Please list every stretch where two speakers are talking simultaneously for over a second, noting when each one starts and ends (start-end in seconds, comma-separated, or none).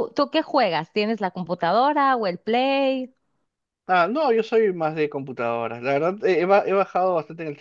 none